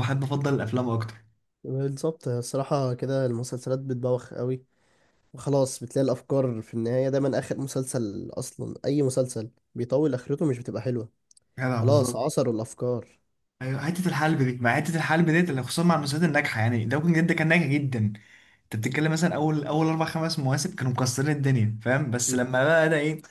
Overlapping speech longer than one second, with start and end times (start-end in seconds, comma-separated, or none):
none